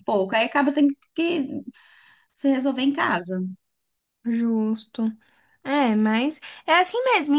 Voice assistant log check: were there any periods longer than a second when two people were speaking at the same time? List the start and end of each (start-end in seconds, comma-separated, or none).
none